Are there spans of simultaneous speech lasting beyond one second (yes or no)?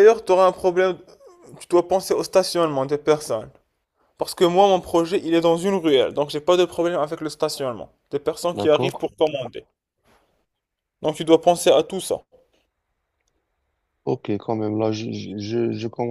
no